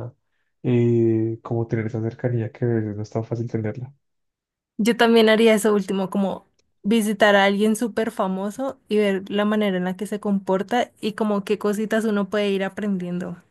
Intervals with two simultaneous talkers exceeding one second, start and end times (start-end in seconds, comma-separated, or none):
none